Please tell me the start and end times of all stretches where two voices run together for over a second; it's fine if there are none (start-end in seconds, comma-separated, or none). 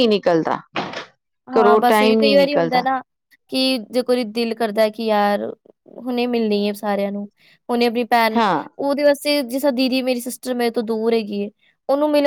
1.5-2.9